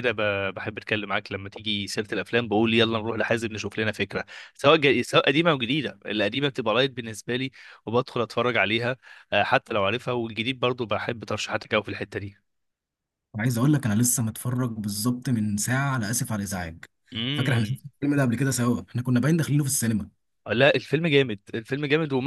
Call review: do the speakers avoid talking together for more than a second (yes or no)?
yes